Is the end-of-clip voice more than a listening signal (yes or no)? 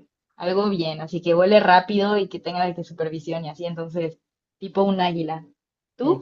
yes